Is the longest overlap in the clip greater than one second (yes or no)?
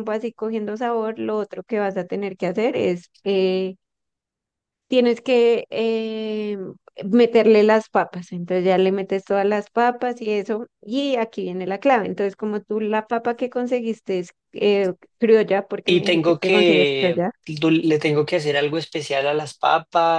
yes